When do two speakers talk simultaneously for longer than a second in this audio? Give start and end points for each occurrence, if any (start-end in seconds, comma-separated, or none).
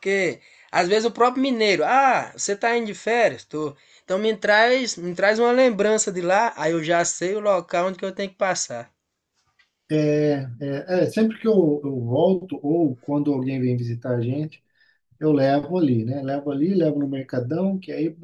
none